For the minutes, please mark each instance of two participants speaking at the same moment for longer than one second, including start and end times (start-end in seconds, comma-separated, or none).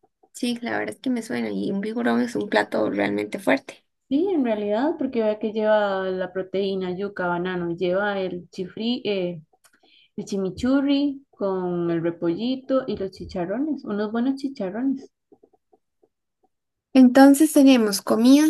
none